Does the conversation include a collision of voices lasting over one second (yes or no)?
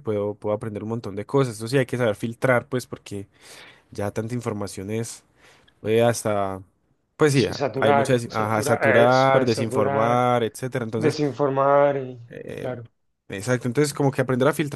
yes